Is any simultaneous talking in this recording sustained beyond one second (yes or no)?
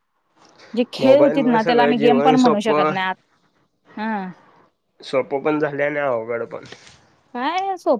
yes